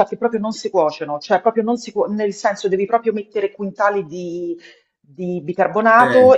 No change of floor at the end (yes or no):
yes